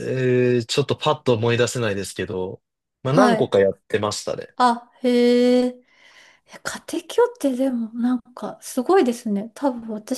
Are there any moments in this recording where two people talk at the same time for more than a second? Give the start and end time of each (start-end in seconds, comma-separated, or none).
none